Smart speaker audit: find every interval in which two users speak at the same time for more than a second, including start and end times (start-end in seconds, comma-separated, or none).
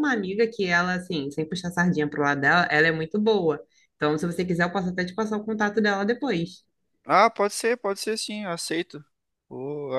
none